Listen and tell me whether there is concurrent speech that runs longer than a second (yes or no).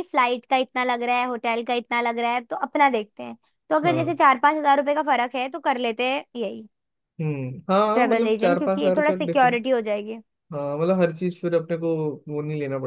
yes